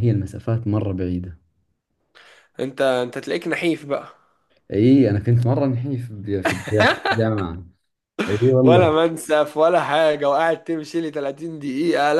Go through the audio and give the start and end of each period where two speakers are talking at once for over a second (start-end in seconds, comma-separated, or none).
none